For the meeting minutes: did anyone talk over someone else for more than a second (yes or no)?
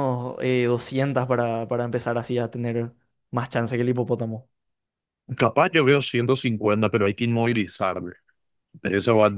no